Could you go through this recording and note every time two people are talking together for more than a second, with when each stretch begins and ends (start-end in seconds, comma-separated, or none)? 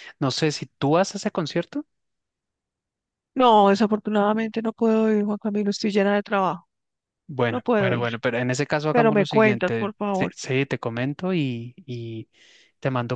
8.9-10.3